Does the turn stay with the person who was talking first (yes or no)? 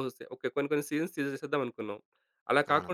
yes